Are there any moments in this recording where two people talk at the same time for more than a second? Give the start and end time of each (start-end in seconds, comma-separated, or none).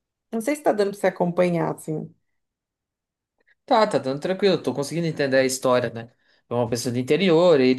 none